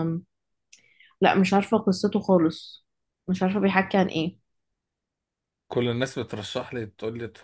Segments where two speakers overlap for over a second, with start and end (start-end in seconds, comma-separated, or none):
none